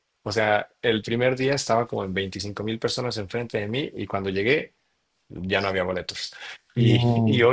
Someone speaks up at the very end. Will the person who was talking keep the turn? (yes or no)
yes